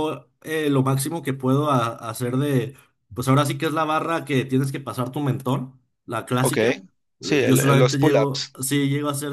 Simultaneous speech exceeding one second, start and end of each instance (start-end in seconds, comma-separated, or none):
7.2-8.6